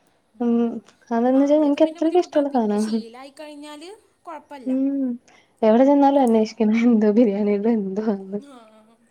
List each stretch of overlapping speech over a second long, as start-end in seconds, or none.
1.4-2.8